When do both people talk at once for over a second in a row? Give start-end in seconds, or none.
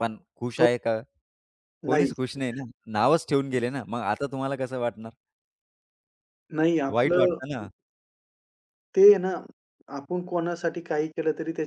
none